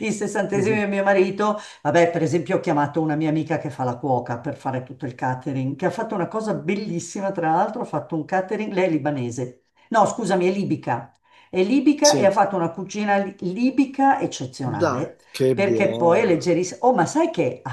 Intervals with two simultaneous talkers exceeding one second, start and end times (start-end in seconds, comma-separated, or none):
14.7-16.5